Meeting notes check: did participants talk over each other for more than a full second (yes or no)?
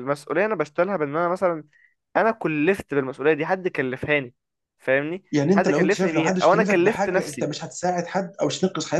yes